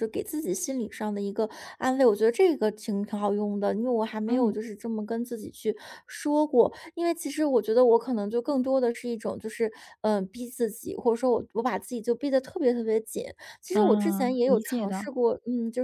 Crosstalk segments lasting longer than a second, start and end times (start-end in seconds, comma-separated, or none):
13.7-15.1